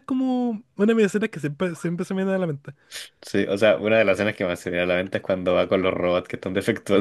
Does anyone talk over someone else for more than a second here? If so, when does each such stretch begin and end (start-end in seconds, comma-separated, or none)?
none